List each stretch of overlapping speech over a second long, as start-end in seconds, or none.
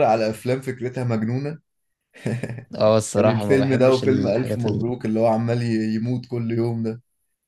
3.2-4.9